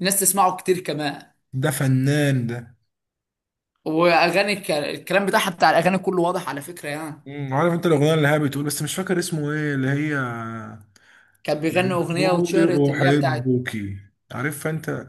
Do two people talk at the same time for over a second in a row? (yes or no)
yes